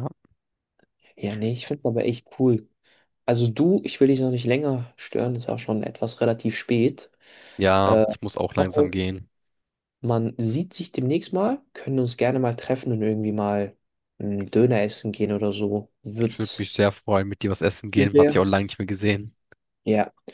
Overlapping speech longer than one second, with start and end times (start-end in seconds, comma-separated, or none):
none